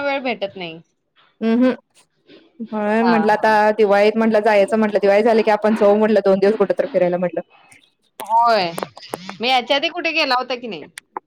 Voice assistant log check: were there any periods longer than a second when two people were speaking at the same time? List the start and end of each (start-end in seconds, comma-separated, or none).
none